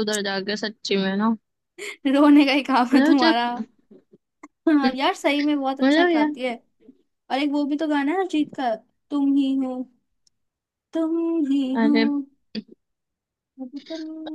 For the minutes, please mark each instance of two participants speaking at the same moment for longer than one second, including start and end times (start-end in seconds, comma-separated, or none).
none